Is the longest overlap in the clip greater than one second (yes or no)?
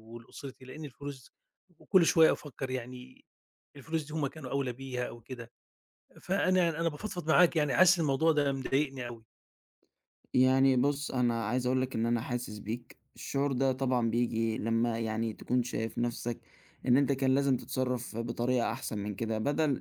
no